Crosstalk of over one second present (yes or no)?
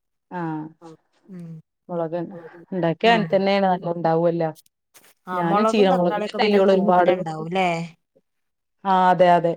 yes